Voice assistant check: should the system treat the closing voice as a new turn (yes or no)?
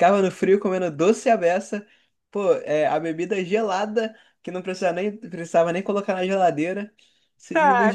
yes